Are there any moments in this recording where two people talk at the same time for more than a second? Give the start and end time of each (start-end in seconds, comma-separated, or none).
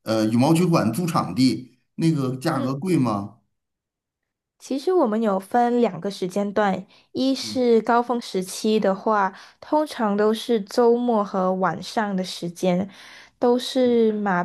none